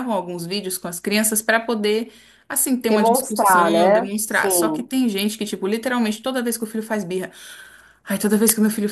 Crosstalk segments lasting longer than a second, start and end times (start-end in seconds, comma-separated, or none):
2.9-4.9